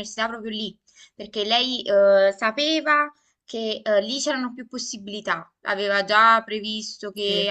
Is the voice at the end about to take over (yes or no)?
no